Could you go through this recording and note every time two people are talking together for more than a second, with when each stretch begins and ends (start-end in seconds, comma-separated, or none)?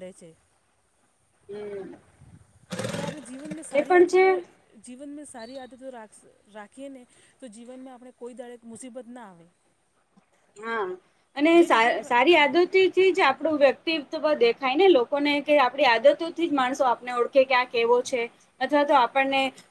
11.6-13.4